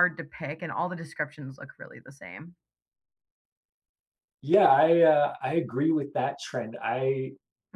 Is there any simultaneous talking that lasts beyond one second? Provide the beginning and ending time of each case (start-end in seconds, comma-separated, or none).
none